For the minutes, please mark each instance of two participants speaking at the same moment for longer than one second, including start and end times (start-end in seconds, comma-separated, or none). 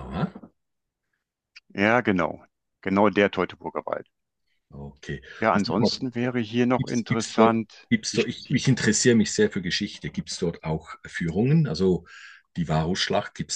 6.8-8.6